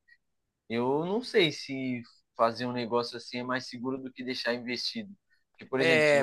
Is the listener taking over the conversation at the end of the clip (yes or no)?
no